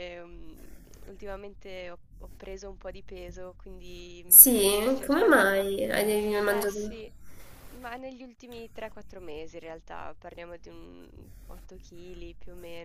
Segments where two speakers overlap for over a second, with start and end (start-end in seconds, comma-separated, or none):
4.3-5.6